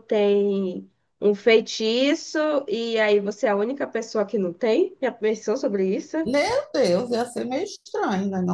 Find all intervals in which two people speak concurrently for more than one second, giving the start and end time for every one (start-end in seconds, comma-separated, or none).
none